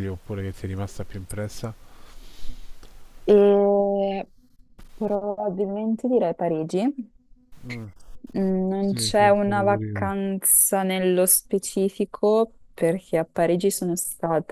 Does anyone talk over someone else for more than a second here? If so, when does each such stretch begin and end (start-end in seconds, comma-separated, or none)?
8.8-10.1